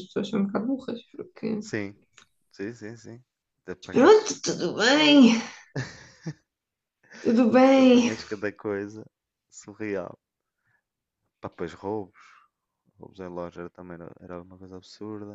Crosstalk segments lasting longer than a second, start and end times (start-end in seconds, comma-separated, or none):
none